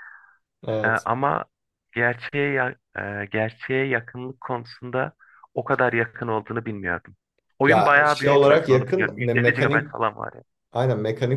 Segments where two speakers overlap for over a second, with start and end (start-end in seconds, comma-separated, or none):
7.7-9.9